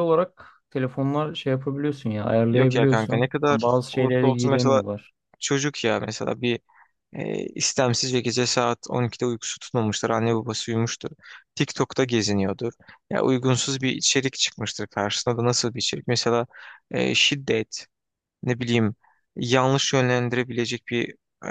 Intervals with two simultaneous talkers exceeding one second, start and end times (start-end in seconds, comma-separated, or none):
2.5-4.8